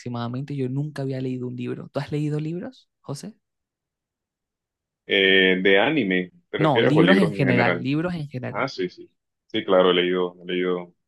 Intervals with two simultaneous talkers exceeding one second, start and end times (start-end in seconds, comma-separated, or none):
6.6-7.9